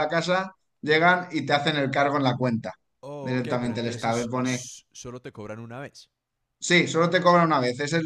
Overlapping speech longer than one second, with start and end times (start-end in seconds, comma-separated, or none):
3.2-4.7